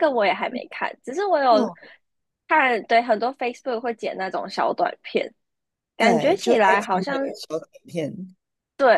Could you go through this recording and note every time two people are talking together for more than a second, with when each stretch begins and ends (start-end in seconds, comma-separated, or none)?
6.0-7.3